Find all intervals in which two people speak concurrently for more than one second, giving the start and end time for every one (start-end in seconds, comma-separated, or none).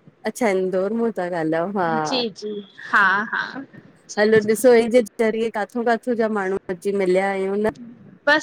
none